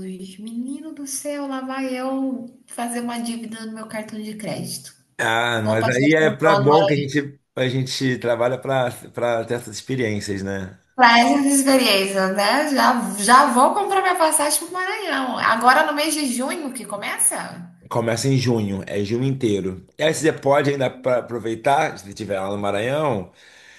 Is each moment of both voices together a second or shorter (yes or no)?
no